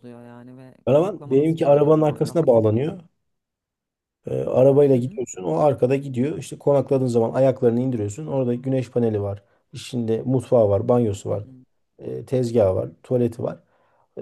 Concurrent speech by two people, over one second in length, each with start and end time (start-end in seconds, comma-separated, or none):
0.8-2.7